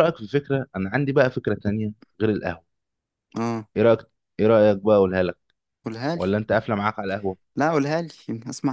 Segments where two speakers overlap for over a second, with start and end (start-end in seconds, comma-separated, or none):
none